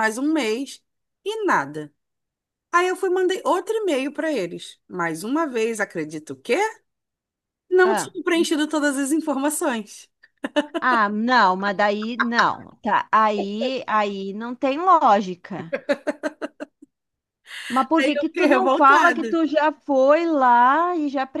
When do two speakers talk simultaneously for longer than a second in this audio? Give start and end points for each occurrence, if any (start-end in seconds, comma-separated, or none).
18.0-19.4